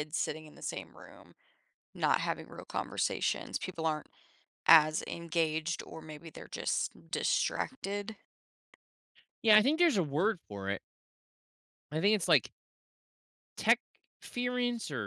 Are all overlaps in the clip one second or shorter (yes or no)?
yes